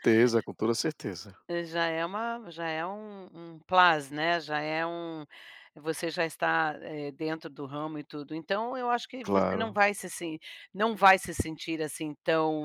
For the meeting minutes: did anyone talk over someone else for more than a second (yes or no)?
no